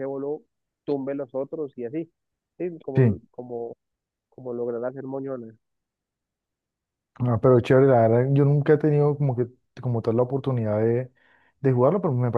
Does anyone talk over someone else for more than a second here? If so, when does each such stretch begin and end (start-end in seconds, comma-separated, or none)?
none